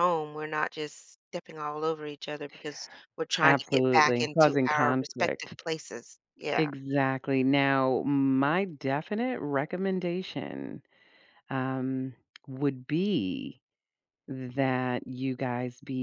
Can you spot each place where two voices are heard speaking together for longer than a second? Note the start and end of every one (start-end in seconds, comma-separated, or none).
3.4-5.6